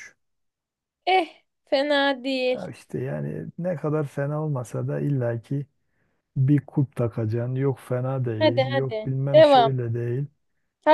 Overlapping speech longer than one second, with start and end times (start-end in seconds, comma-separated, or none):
8.4-9.7